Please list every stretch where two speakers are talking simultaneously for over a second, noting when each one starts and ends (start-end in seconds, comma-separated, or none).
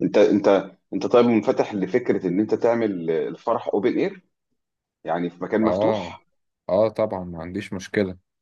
none